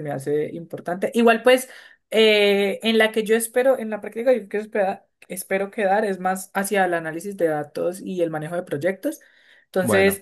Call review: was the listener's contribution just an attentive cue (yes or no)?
yes